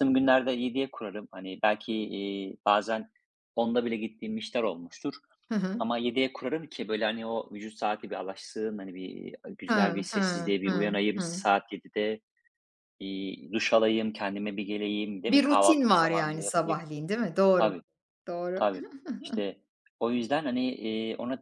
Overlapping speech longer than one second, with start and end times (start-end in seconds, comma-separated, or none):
9.7-11.4, 15.3-16.9